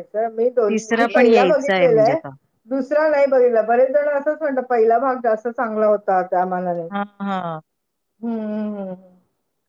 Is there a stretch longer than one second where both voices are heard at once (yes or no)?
yes